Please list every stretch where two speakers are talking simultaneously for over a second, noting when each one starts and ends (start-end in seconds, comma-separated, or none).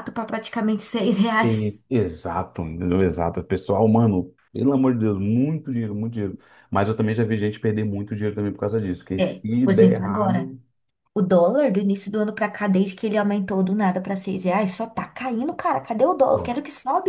9.2-10.5